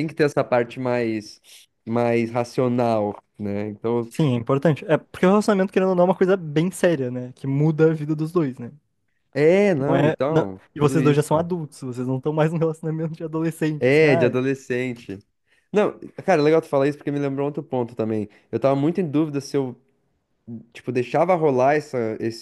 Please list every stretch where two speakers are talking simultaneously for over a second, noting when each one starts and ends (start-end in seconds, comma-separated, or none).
9.9-11.3